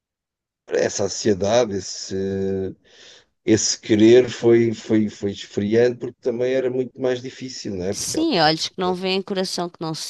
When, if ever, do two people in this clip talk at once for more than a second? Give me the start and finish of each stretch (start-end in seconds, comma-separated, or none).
none